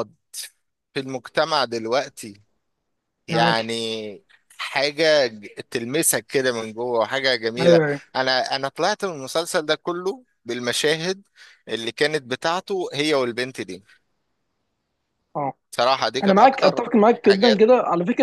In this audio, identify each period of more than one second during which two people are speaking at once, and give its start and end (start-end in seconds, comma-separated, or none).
16.2-17.7